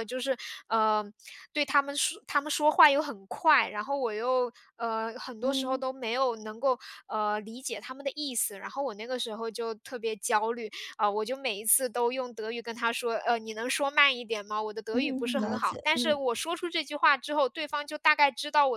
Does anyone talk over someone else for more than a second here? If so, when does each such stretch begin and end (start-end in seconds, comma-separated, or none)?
14.9-16.2